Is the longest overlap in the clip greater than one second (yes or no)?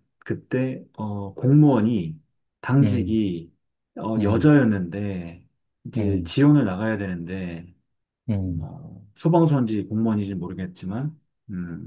no